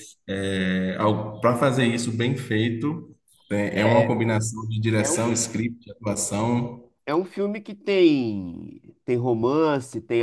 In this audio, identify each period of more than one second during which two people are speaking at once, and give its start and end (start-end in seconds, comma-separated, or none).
none